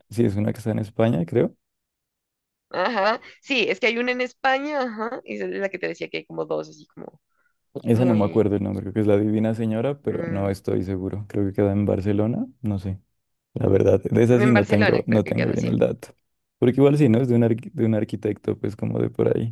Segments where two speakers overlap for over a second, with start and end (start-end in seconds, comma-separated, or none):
14.3-15.7